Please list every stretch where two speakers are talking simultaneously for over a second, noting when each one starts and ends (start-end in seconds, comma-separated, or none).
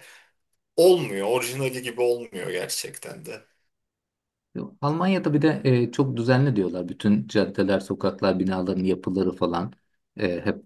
none